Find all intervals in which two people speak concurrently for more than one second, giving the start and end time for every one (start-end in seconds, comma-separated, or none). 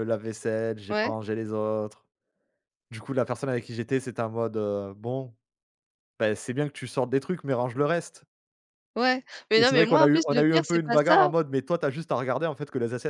9.6-11.3